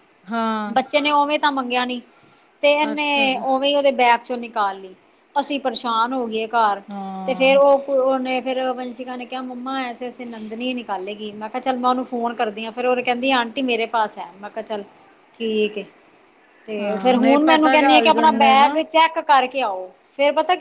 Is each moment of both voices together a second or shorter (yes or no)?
no